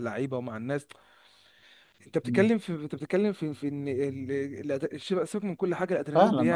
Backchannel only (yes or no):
no